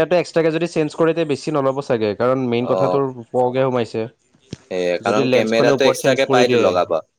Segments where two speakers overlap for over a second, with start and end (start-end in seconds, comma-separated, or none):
5.1-6.7